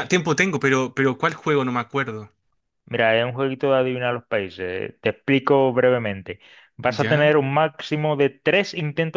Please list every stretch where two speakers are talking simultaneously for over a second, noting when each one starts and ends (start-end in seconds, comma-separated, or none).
none